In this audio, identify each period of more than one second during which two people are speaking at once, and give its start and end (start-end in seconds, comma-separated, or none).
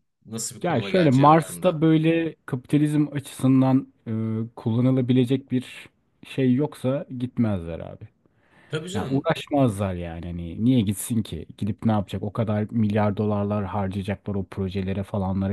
0.6-1.8